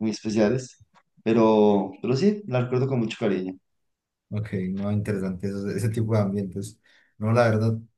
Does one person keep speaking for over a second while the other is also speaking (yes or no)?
no